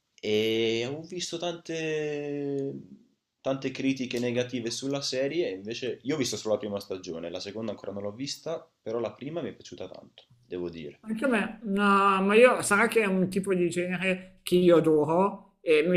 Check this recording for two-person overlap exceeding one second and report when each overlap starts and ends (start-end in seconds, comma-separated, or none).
none